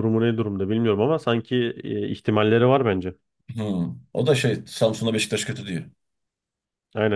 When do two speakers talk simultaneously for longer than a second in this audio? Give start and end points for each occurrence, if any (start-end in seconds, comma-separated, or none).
none